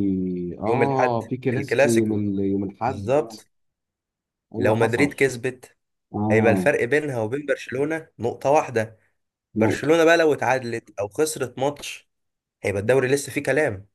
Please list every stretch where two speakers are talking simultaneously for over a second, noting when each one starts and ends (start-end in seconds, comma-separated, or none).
0.7-2.1